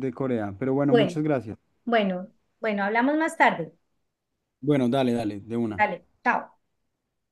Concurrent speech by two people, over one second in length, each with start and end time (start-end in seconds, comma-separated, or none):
none